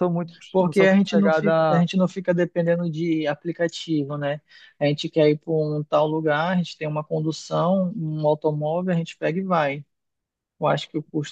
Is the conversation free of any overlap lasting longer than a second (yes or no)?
no